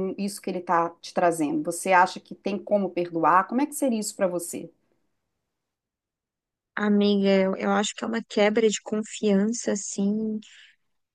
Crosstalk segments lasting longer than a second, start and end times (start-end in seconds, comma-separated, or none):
none